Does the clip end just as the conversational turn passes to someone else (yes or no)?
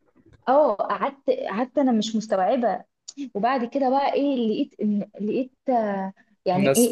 no